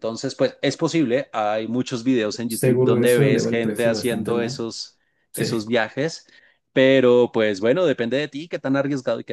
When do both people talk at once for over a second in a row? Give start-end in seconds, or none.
2.5-4.6